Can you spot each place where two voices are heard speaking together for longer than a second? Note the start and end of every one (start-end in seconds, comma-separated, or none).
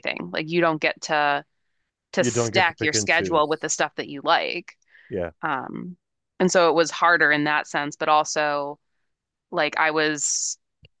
2.2-3.7